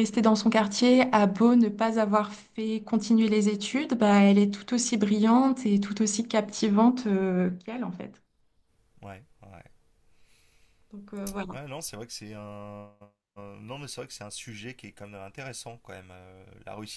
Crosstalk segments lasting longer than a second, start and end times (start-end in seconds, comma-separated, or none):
none